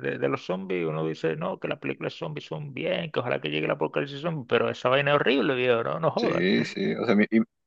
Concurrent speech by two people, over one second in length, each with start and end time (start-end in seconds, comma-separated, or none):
none